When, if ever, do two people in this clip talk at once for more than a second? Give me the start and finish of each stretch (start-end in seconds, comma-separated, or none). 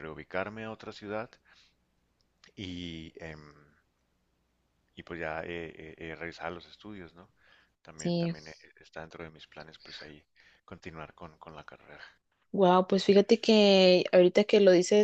none